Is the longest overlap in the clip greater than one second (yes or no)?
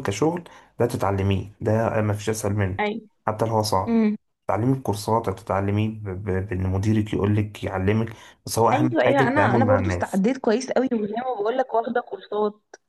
yes